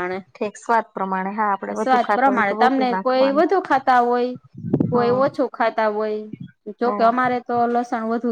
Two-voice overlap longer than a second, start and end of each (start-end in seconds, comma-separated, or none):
1.8-3.4